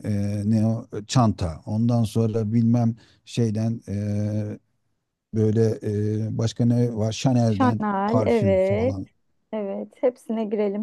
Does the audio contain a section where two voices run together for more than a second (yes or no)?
yes